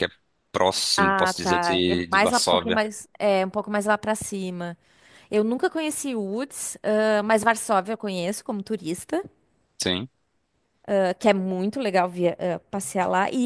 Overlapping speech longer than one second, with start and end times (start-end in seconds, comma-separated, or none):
1.0-2.8